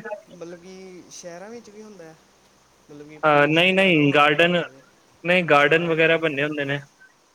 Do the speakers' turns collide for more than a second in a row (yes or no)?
yes